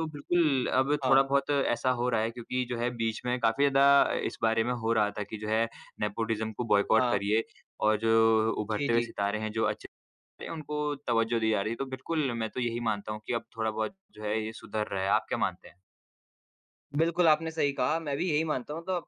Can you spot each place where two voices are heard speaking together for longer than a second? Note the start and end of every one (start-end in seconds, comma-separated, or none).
none